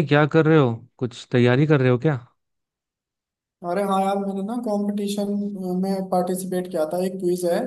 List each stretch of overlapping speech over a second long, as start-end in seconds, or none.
none